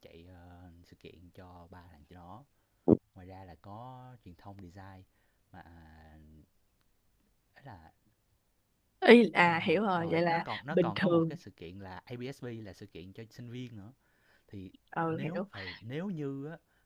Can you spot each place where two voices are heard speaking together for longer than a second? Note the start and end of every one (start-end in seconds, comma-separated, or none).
9.4-11.4